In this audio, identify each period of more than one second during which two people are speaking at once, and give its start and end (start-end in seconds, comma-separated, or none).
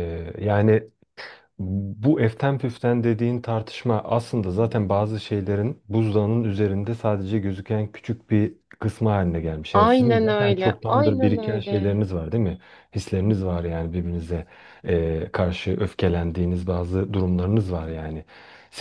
9.7-12.0